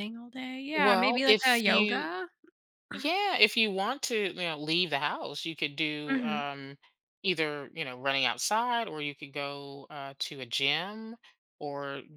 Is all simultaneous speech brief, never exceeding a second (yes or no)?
no